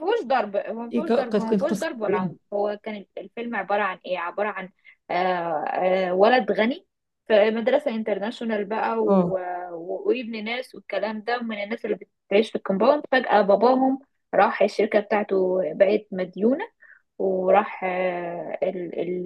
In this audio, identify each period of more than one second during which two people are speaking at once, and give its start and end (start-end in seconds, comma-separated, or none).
0.9-2.4